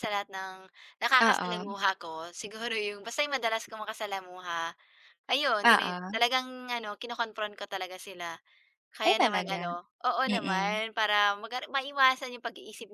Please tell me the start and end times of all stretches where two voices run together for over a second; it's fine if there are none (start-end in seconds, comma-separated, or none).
none